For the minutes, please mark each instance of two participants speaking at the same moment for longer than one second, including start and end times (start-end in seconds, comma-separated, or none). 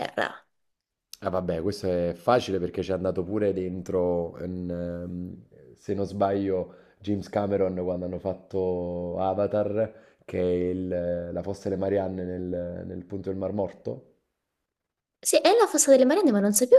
none